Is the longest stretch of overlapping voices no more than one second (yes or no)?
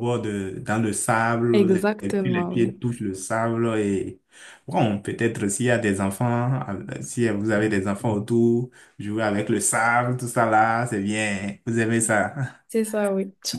no